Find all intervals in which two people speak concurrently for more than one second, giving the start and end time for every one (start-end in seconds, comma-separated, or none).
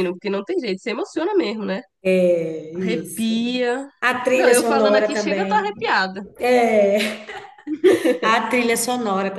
4.3-5.8